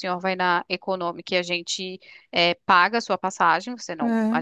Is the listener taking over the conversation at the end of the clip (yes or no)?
no